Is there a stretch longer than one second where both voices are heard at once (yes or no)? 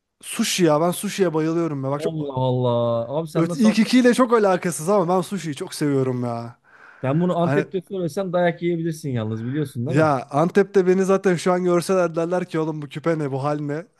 no